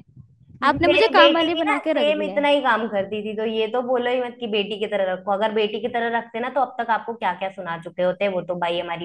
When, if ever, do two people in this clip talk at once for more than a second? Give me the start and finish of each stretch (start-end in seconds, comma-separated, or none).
0.7-2.5